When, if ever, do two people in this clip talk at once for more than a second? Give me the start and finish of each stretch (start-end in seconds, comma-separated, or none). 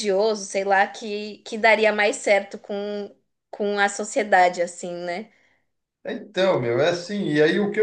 none